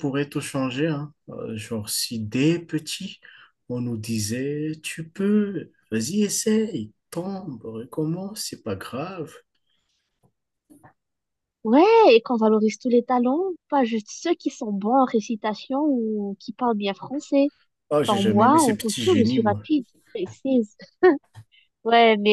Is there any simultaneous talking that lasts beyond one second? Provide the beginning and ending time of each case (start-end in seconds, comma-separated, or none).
18.0-19.6